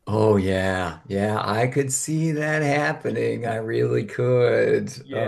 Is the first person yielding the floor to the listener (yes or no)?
yes